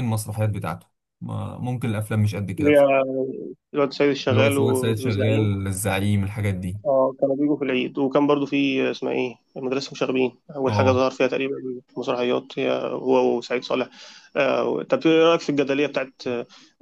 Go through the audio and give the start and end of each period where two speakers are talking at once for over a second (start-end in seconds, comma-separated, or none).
4.3-5.6